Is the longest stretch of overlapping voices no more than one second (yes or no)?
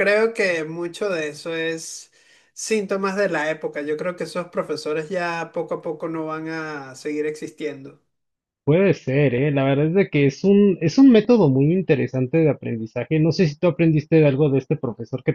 yes